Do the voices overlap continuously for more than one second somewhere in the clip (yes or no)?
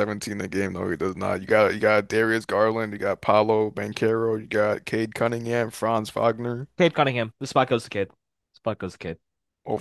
no